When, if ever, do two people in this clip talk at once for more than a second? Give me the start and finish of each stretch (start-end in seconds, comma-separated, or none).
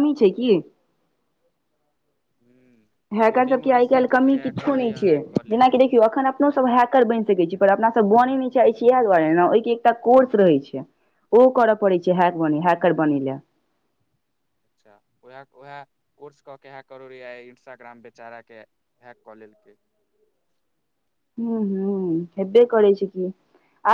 3.3-5.1